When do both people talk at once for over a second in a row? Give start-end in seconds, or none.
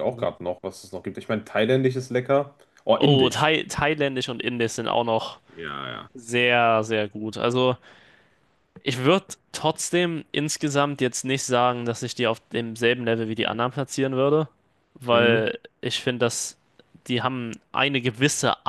none